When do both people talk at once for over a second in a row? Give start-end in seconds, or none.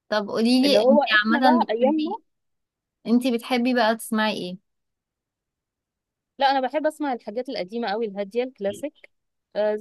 0.6-2.2